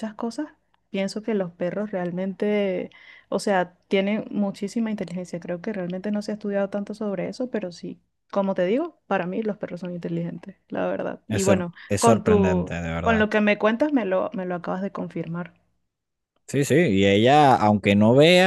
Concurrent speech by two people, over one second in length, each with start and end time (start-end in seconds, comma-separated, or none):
11.3-13.3